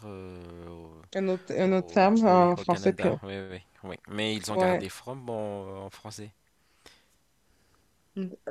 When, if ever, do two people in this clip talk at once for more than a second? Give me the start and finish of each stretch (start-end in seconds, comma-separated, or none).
1.6-3.2